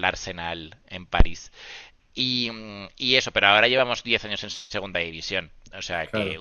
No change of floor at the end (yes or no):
yes